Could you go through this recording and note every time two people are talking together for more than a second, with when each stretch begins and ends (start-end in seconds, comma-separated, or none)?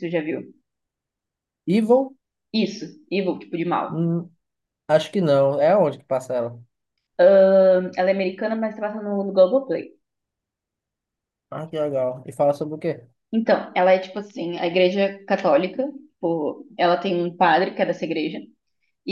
none